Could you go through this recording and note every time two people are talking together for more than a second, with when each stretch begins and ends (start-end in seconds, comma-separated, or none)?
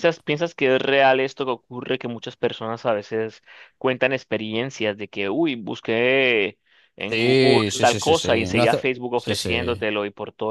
7.1-9.9